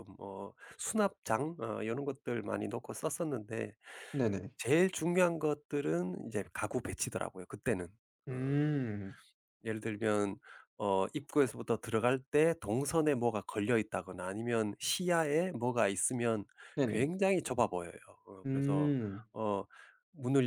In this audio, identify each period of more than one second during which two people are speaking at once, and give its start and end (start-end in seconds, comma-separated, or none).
none